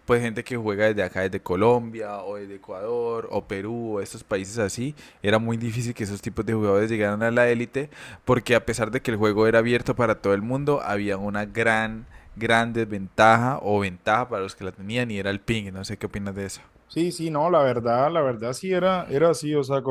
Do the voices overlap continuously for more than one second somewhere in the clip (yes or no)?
no